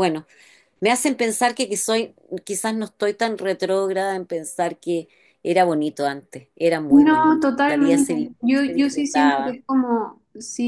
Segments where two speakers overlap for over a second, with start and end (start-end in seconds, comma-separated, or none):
6.9-9.6